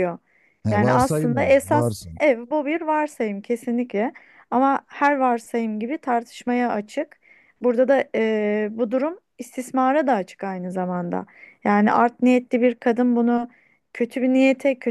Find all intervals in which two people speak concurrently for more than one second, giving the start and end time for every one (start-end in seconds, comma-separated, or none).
0.7-2.2